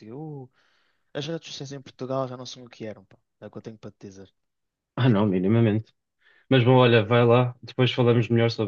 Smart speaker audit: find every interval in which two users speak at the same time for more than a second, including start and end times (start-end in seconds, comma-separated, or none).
none